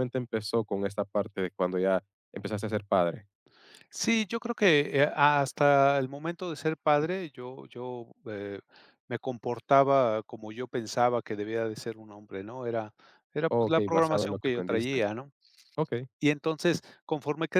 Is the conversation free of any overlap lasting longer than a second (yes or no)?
no